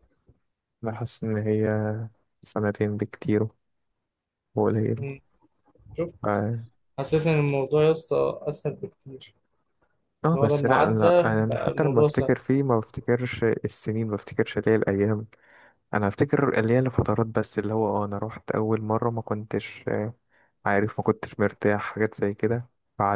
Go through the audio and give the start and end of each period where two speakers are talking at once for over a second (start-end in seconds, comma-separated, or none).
10.3-12.3